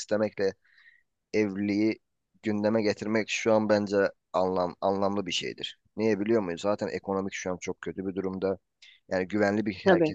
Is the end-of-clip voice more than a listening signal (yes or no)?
yes